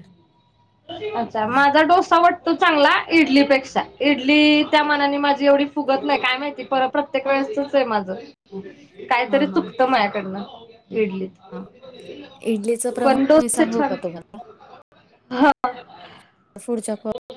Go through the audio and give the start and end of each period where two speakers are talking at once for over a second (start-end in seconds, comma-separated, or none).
none